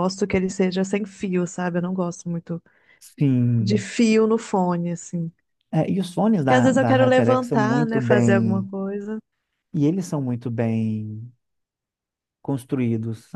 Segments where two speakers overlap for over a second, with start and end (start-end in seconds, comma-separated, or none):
6.4-8.7